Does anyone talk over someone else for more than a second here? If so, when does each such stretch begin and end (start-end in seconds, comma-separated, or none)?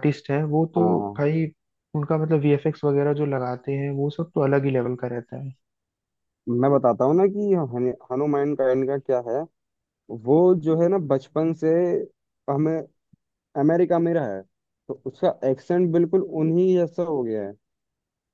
none